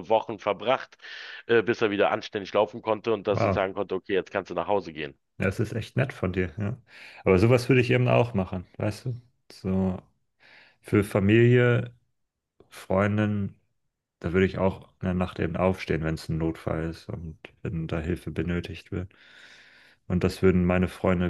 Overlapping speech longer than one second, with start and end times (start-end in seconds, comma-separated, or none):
none